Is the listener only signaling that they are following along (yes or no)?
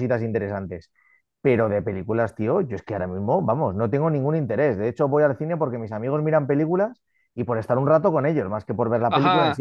no